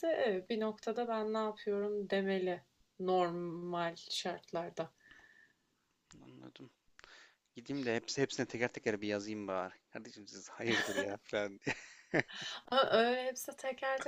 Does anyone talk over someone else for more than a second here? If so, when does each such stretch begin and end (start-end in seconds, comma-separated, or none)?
none